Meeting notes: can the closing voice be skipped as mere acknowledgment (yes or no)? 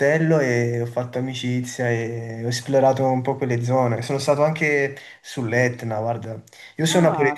yes